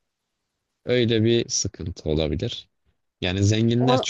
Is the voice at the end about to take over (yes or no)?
no